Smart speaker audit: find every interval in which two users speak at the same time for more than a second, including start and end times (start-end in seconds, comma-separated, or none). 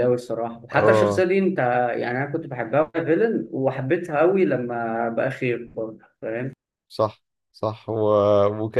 none